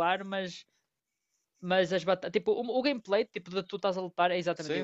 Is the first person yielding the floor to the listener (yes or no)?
yes